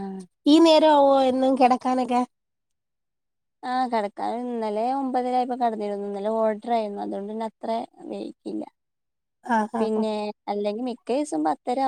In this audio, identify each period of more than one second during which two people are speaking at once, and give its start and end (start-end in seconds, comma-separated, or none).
none